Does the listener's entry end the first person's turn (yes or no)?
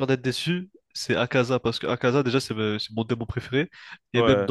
no